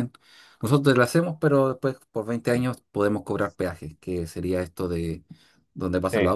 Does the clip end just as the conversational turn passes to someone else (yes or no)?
no